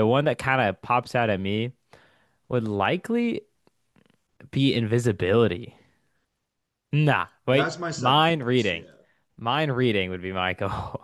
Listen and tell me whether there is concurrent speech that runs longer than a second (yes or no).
yes